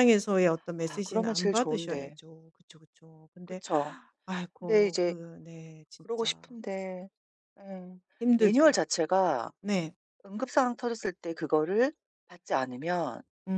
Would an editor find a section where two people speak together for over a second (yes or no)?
yes